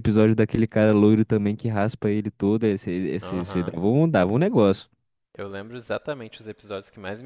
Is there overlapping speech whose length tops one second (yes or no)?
no